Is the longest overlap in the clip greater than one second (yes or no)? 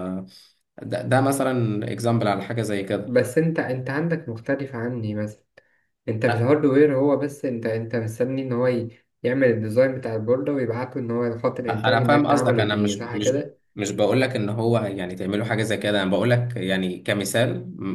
yes